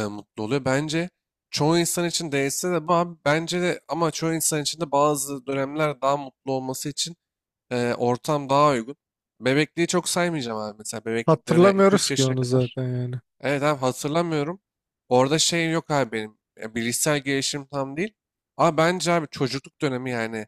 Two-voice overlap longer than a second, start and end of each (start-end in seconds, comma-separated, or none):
11.3-12.8